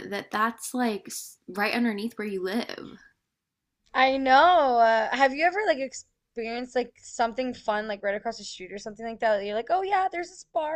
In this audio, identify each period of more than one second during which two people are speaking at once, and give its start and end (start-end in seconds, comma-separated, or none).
none